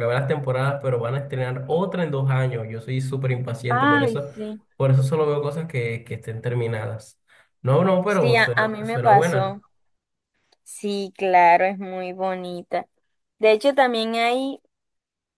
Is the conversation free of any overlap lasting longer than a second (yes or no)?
no